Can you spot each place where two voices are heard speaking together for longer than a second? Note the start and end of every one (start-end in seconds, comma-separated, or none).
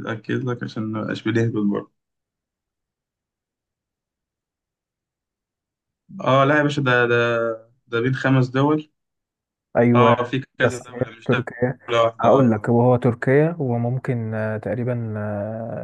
9.9-11.5